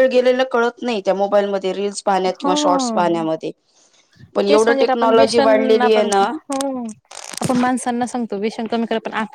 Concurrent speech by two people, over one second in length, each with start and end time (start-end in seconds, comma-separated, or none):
4.5-6.1